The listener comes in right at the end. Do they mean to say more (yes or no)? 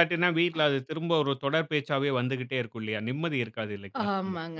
yes